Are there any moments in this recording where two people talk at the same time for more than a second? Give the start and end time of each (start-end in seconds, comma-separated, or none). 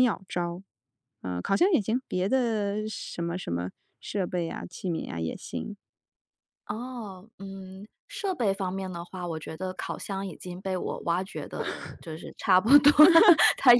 none